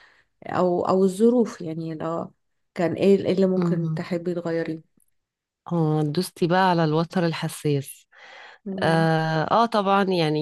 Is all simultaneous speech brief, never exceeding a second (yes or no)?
yes